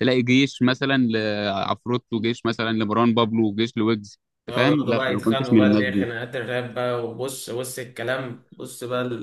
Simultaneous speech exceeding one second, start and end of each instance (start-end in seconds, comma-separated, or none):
4.4-6.1